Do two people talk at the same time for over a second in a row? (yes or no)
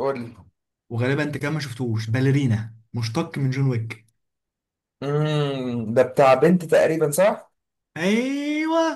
no